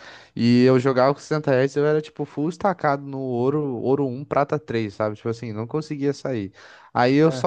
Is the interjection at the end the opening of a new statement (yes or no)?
no